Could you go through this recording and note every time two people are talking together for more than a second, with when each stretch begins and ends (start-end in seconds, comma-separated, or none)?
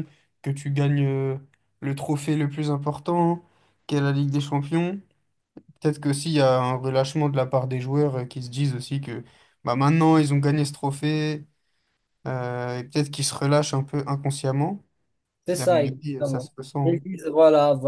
15.5-17.0